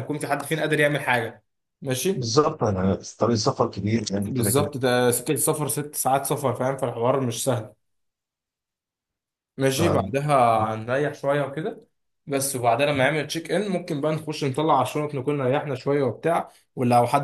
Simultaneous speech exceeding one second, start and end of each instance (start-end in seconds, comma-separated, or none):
none